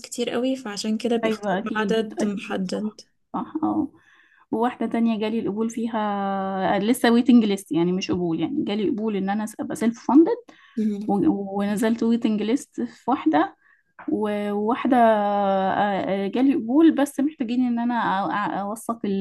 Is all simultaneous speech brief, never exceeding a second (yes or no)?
no